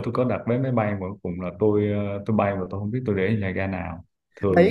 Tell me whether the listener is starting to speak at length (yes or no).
yes